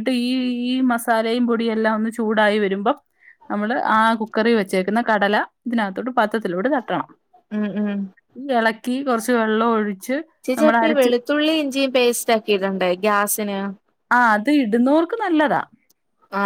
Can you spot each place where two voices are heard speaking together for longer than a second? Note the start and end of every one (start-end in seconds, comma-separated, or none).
none